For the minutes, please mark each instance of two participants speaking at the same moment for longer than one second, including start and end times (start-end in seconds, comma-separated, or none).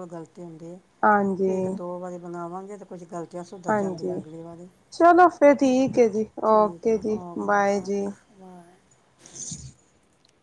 6.0-8.1